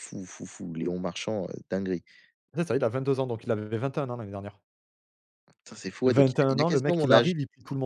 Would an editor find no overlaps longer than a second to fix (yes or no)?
no